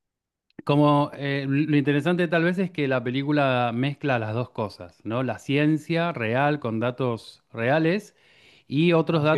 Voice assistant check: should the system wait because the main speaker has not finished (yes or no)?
yes